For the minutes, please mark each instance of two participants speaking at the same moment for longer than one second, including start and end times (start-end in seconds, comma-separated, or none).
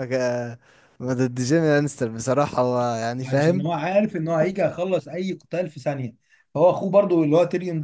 none